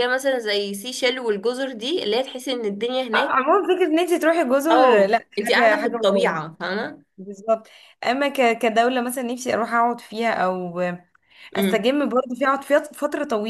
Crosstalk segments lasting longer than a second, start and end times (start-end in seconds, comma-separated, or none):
4.7-6.5